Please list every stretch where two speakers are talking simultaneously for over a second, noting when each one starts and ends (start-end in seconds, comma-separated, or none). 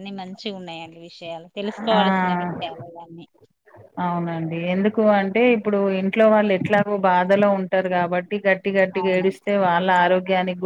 none